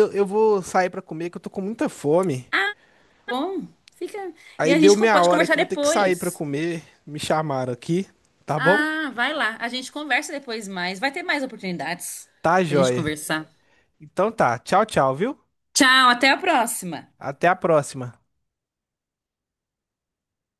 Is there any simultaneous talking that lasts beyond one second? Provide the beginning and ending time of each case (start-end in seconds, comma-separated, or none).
4.6-6.4